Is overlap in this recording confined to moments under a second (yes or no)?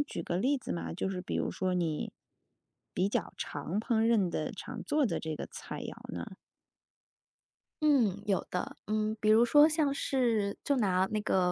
yes